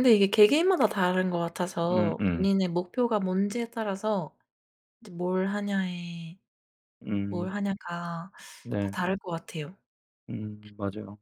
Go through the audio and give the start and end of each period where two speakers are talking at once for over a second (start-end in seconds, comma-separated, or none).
none